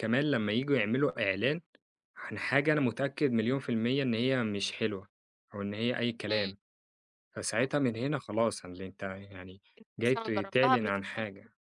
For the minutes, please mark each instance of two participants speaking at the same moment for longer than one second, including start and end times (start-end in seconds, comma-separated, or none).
10.1-11.2